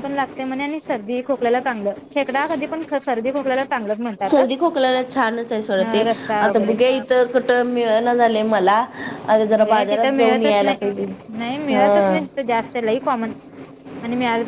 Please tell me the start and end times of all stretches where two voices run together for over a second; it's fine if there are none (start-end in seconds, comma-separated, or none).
9.6-11.0